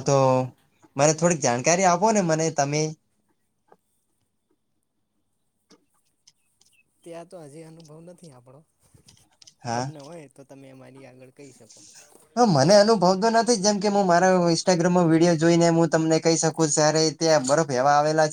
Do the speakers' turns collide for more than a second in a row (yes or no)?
no